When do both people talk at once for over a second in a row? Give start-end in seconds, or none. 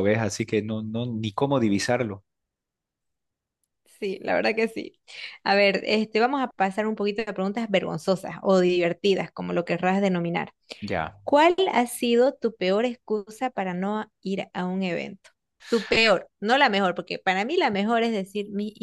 none